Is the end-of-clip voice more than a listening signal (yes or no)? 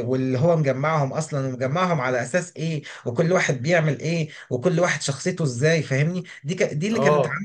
no